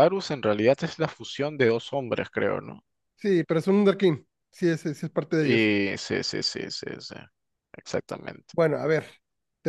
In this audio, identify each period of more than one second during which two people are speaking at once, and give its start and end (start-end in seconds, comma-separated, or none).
none